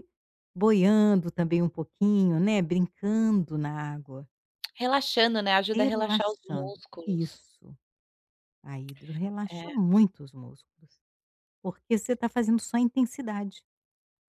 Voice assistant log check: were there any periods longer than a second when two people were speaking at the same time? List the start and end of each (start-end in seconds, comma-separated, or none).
5.7-7.4